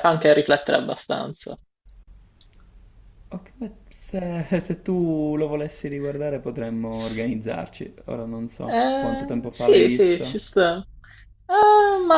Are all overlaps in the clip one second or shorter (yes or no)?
no